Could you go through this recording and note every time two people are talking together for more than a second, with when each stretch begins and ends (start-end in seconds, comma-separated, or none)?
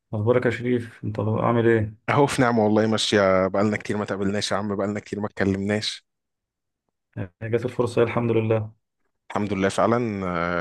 none